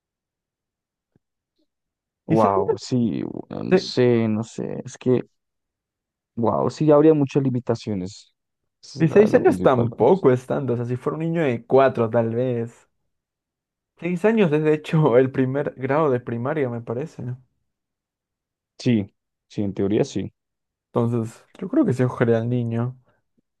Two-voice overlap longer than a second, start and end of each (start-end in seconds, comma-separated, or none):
9.0-10.2